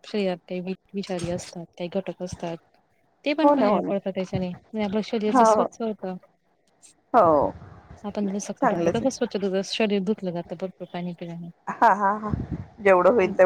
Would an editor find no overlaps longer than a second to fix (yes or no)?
yes